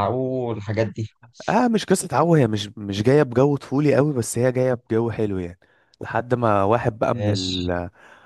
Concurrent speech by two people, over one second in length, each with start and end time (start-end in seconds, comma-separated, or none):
none